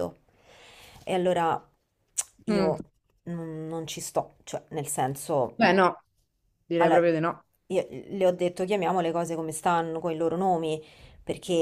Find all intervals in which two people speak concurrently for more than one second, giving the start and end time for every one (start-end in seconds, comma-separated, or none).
none